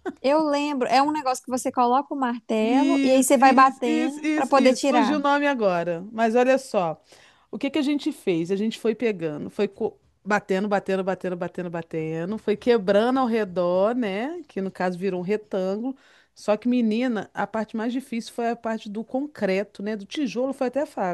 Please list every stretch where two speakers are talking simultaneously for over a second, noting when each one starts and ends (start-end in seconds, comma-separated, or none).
2.6-5.2